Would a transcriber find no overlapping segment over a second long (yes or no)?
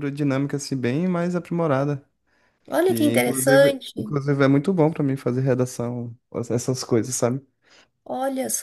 no